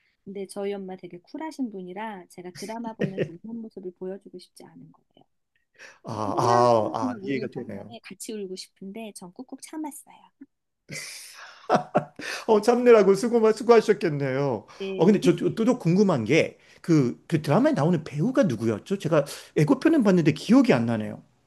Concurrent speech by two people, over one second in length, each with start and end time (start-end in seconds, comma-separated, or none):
6.1-8.0